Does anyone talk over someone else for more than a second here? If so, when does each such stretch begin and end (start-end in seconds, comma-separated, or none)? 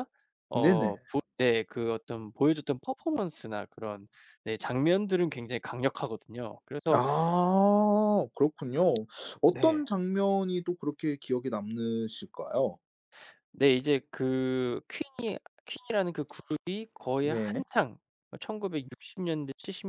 none